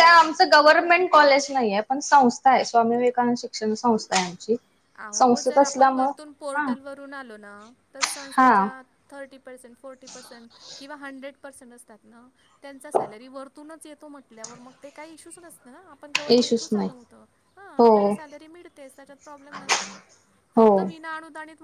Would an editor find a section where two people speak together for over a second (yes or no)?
no